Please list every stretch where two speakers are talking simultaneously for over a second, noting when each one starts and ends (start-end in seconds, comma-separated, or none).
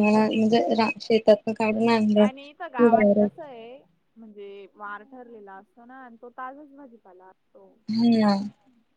none